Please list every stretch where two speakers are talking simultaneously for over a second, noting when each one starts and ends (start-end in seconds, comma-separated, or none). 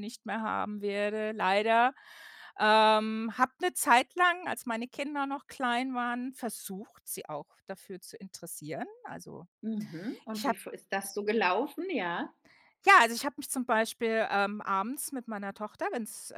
none